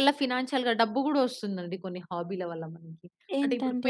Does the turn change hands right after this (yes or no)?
no